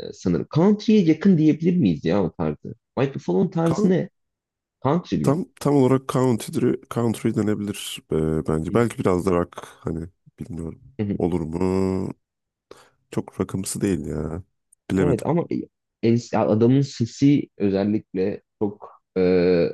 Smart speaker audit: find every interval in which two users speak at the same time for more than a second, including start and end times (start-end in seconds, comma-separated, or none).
none